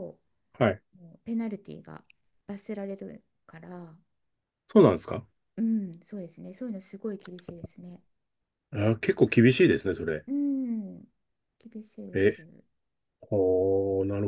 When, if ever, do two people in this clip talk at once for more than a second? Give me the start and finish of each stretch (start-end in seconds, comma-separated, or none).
none